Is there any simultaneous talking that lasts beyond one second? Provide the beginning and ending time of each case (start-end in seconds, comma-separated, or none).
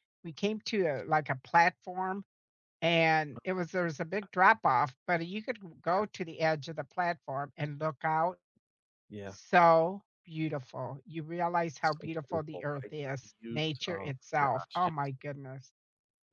11.8-15.1